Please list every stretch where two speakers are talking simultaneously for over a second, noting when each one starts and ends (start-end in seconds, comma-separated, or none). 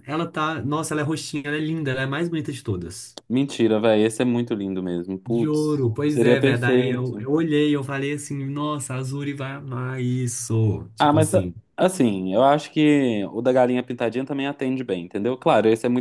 5.3-7.3